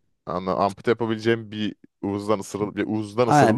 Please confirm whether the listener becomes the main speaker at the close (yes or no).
yes